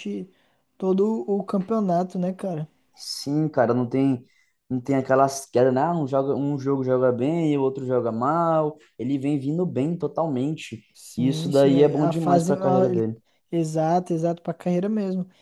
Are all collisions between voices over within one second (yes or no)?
no